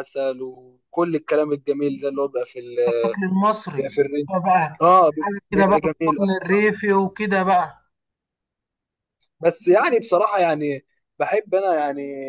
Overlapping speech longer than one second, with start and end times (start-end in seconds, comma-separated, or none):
5.2-6.7